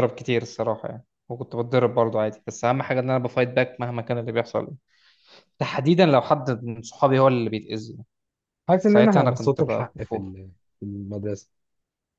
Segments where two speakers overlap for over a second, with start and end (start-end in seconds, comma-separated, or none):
8.9-10.3